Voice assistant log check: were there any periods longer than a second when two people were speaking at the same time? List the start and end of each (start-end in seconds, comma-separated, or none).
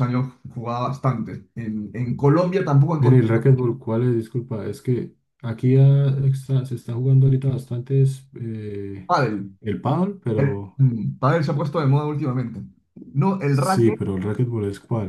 none